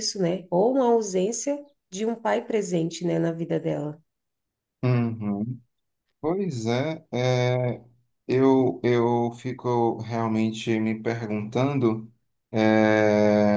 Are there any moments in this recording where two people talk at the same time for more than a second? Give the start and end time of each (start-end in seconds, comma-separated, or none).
none